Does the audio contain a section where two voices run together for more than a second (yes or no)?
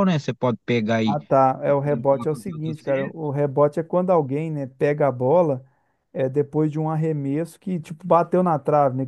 yes